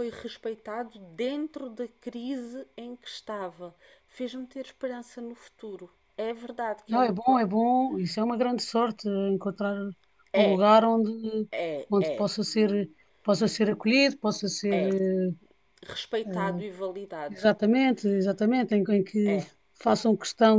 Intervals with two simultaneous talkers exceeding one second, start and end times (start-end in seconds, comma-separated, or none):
none